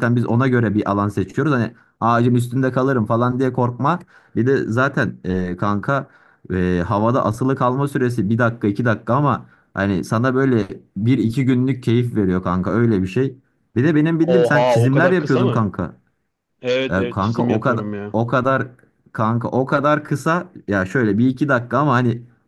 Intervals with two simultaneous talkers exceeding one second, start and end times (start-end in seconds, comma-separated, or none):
14.2-15.7, 16.9-18.2